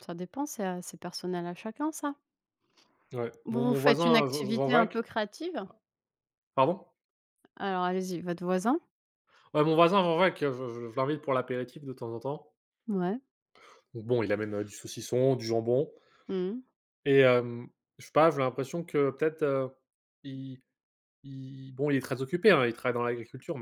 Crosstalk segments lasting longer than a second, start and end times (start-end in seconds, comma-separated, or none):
3.5-5.0